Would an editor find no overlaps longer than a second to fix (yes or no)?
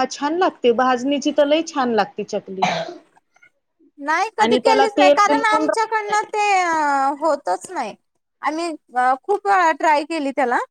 no